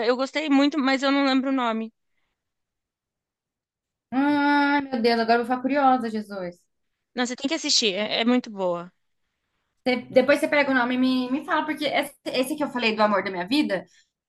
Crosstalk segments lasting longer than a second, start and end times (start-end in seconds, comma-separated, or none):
none